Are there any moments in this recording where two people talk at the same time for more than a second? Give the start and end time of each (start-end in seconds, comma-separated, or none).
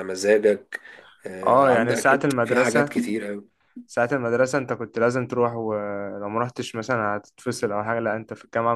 1.5-3.0